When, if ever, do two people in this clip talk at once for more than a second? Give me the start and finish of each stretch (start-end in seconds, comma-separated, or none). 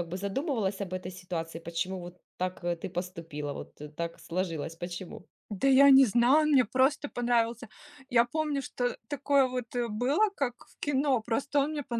none